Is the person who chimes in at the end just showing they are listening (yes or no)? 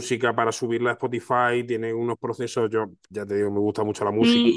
no